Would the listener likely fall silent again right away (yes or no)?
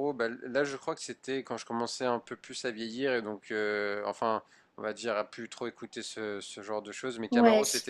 yes